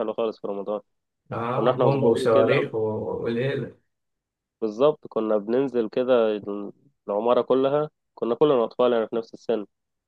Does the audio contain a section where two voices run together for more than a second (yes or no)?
yes